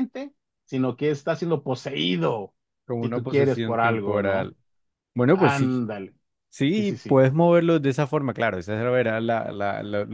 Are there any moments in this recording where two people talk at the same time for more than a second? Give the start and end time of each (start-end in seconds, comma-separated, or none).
3.0-4.5